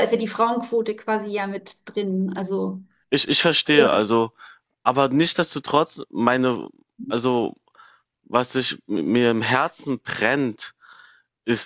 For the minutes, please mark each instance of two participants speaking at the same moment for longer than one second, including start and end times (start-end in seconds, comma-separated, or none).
none